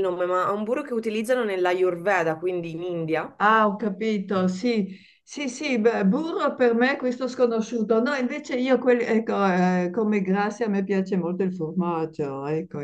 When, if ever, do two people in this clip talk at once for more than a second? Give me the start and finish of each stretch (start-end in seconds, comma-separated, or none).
none